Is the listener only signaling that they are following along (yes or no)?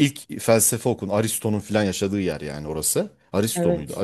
yes